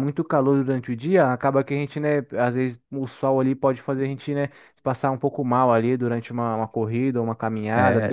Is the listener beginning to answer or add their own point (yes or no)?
yes